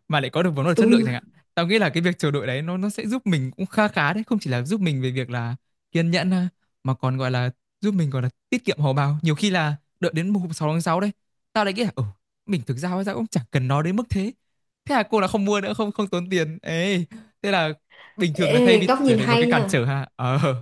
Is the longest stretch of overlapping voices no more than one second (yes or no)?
no